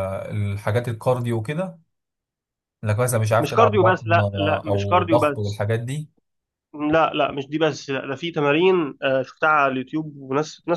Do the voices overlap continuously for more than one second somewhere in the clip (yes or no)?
yes